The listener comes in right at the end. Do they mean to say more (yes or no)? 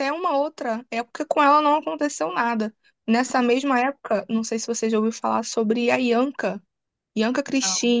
no